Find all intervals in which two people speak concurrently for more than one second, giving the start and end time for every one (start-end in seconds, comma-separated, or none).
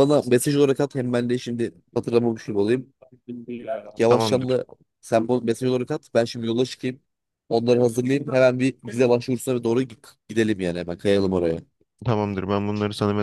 none